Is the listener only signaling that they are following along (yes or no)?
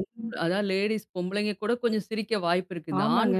yes